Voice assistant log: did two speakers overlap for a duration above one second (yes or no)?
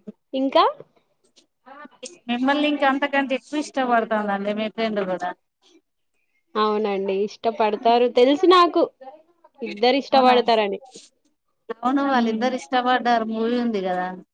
no